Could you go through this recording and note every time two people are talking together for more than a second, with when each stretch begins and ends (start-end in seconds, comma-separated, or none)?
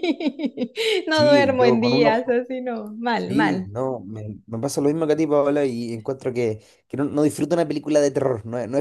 1.1-2.4